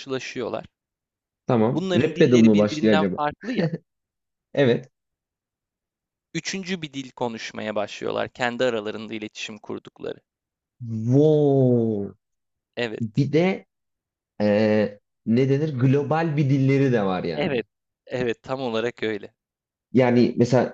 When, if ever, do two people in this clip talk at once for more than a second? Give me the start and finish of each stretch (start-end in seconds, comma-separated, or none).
1.7-3.2